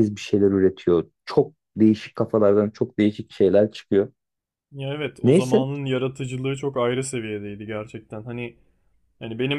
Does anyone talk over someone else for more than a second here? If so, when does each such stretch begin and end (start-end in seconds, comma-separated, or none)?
none